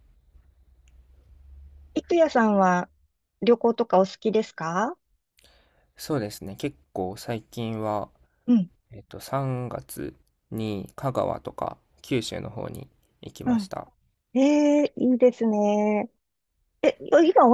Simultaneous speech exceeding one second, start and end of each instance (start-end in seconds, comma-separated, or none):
none